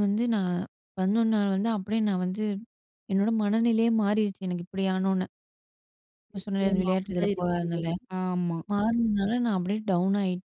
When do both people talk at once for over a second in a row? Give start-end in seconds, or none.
6.3-7.9